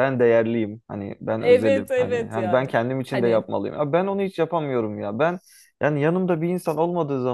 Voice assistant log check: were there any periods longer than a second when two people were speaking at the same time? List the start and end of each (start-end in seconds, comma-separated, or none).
1.4-3.5